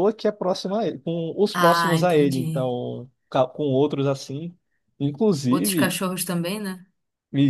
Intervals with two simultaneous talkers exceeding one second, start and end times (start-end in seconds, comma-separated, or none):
1.5-2.8